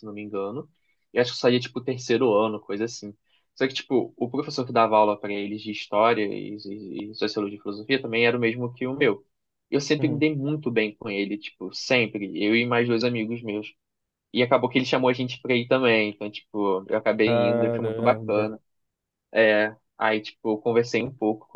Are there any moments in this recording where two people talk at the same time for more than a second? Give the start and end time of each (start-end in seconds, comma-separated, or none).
17.2-18.5